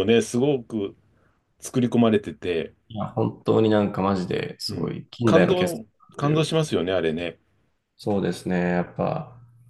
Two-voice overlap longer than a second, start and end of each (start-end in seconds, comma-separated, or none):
4.7-6.5